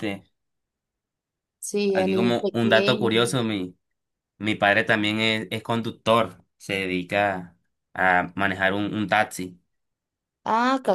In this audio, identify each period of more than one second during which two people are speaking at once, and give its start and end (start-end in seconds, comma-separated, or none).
1.9-3.4